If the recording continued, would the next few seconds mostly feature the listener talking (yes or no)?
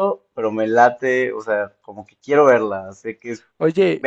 yes